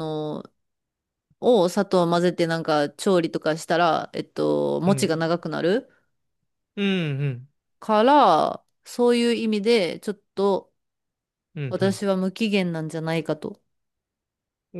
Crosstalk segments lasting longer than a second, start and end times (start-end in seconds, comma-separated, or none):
none